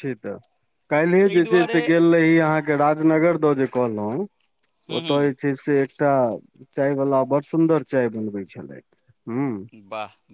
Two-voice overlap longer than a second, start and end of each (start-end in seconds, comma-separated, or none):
none